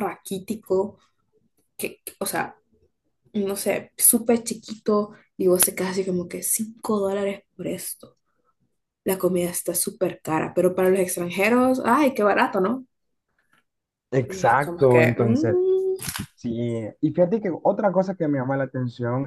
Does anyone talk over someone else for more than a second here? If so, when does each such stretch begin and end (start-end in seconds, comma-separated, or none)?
14.2-15.6